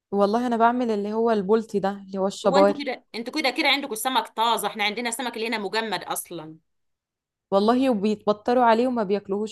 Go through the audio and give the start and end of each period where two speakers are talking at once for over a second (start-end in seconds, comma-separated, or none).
none